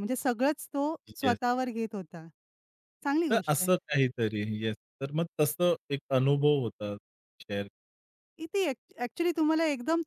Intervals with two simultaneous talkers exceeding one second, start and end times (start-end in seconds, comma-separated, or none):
none